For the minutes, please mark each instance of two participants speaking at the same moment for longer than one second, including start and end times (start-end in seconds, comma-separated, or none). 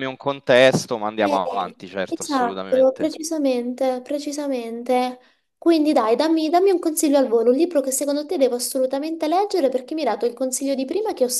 1.2-3.1